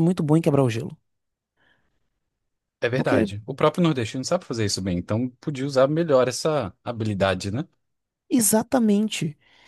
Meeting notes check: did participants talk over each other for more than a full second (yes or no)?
no